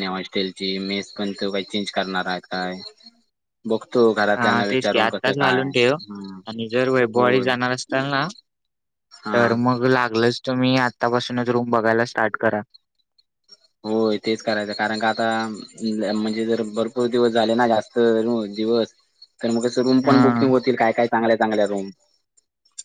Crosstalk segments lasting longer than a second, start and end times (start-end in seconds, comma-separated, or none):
4.4-5.9